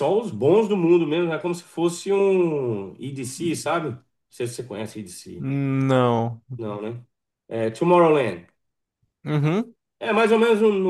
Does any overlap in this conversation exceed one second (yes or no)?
no